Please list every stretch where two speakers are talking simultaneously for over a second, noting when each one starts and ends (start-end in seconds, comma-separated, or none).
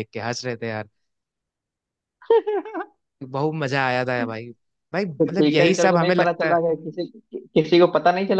5.2-6.6